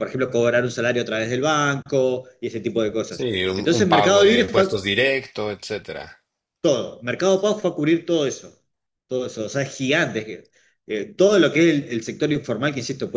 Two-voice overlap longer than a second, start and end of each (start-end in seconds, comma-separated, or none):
3.1-4.7